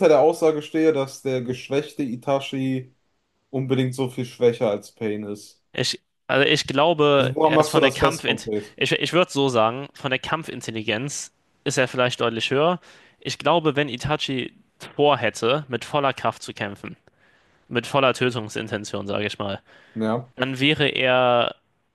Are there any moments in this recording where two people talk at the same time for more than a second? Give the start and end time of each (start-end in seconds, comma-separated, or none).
7.2-8.8